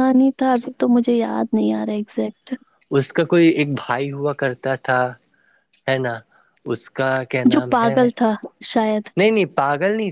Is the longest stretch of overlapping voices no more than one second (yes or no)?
yes